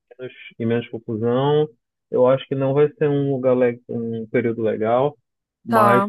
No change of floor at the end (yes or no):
yes